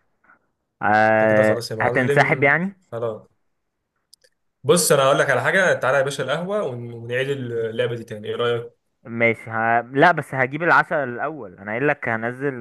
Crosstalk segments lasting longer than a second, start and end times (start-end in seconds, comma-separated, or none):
1.2-2.5